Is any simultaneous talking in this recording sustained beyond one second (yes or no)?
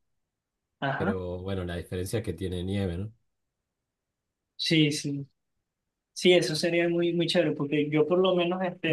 no